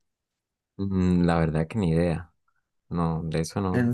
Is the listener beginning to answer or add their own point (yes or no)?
yes